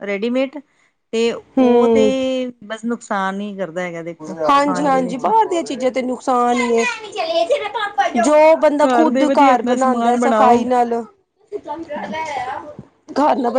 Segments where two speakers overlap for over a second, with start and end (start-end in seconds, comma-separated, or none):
8.8-10.6